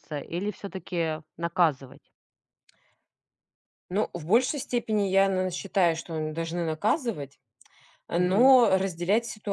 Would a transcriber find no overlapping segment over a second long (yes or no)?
yes